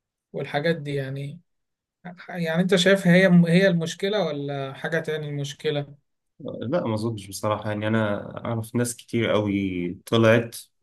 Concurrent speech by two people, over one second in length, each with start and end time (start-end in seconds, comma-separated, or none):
none